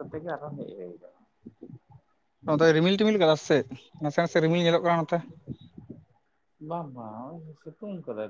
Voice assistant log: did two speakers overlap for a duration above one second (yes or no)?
no